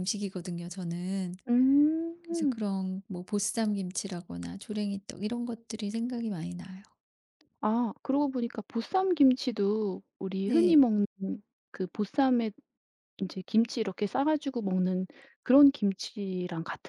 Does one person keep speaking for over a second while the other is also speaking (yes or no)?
no